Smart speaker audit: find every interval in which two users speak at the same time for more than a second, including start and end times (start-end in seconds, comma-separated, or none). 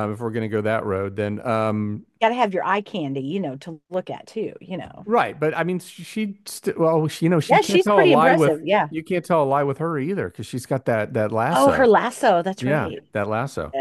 7.5-8.9